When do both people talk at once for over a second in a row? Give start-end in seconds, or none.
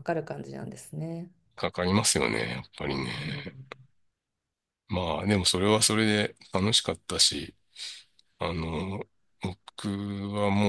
none